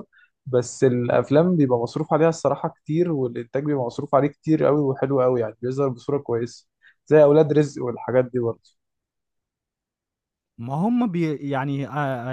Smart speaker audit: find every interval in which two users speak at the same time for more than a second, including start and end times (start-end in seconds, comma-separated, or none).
none